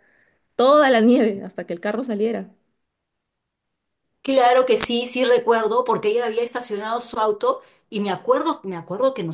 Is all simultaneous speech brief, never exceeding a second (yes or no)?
yes